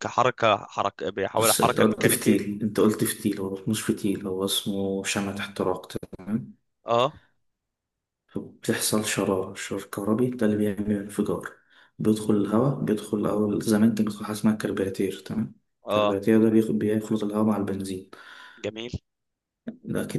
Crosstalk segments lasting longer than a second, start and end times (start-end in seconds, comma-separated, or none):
1.3-2.5